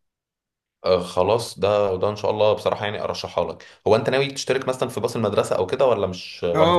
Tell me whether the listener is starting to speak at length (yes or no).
yes